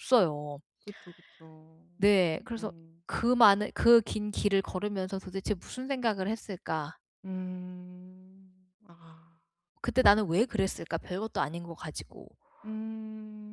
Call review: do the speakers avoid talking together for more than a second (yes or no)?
yes